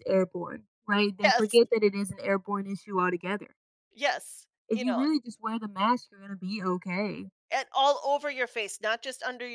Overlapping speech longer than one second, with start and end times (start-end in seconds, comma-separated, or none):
none